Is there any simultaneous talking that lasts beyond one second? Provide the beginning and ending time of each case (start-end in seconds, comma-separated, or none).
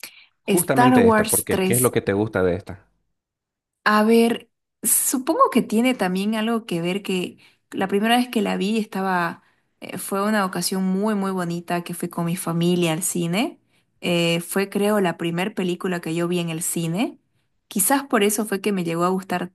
0.6-1.9